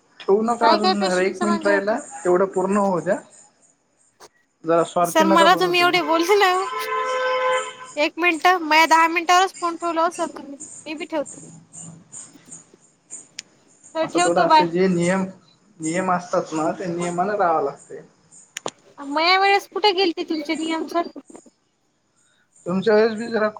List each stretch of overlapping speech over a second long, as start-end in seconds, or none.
0.6-2.1